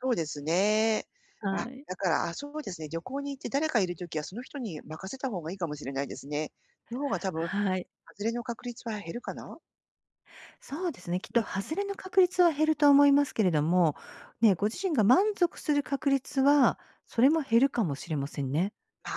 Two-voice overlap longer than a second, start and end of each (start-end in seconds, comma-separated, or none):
none